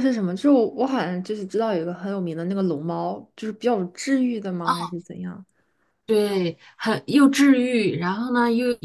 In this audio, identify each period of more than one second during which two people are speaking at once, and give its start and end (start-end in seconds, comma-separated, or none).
none